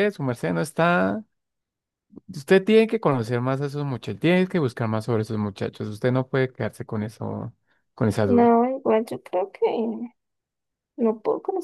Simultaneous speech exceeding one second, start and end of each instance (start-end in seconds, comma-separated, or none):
none